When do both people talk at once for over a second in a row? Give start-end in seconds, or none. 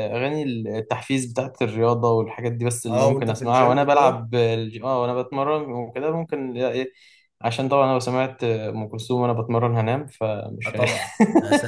2.9-4.2